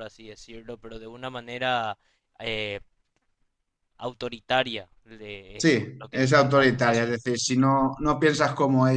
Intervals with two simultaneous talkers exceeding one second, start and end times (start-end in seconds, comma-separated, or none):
5.6-7.2